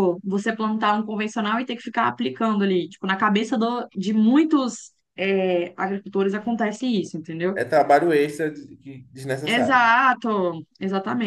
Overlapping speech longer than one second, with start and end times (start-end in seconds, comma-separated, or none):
none